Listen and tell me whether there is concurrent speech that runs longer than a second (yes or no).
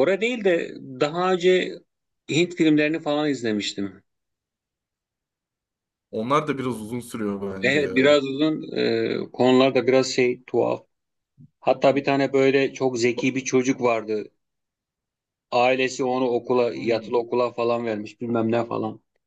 no